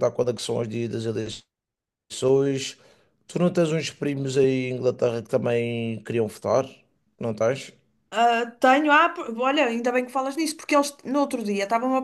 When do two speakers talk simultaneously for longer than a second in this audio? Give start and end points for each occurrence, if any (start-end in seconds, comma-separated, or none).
none